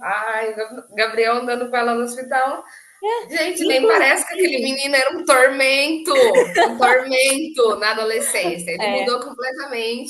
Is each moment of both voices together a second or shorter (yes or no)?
no